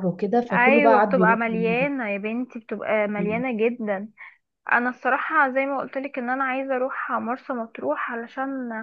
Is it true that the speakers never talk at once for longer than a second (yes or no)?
no